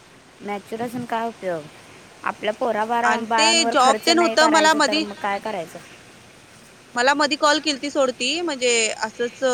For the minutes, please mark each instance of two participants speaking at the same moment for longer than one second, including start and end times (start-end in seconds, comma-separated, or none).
3.1-5.0